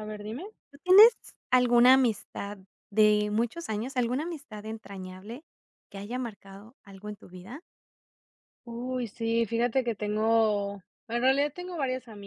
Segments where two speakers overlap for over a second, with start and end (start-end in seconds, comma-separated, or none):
none